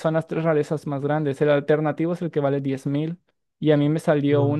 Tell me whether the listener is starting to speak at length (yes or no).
no